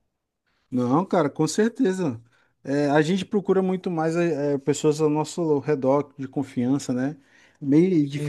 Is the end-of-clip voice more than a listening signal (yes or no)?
no